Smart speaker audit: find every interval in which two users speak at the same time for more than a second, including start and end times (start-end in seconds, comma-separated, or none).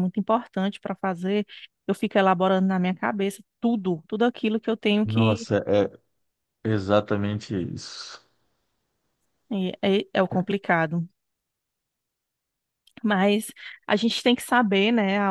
none